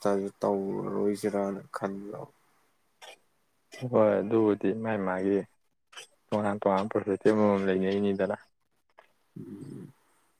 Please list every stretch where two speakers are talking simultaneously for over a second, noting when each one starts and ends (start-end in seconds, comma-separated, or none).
none